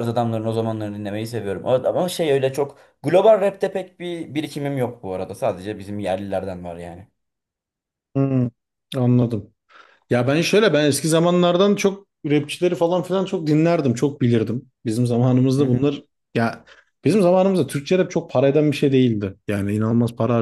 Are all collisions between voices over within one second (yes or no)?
yes